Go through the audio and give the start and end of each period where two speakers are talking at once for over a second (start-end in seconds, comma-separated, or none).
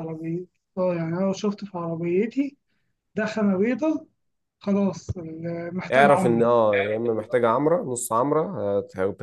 none